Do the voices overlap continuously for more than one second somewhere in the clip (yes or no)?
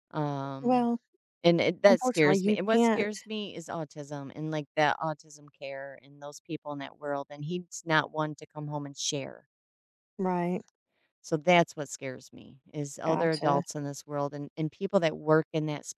yes